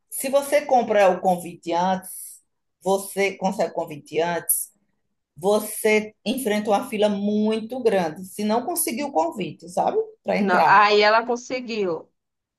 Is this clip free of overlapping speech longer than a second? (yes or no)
yes